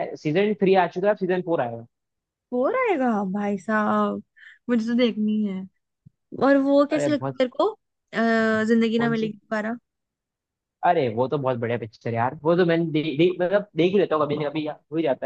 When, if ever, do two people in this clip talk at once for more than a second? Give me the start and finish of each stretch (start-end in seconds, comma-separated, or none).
none